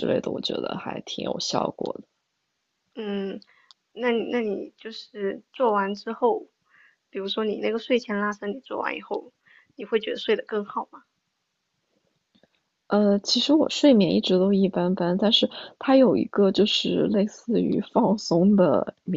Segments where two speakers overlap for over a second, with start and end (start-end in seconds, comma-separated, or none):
none